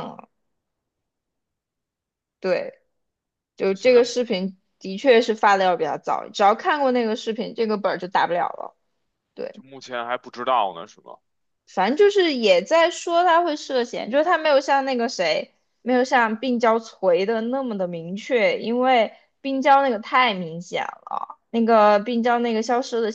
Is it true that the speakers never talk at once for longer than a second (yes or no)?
yes